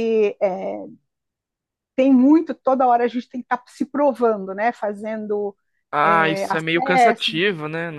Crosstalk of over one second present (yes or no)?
yes